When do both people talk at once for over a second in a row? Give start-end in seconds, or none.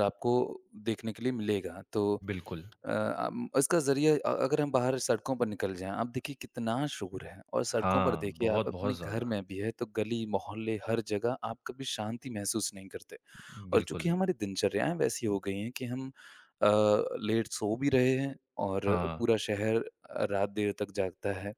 7.7-9.3